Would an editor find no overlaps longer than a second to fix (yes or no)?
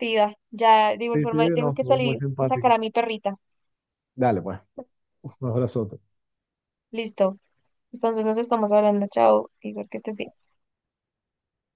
no